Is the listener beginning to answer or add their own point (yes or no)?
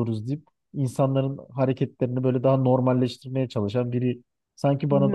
yes